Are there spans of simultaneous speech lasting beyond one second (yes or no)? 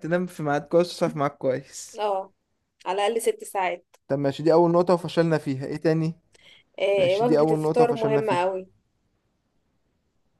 yes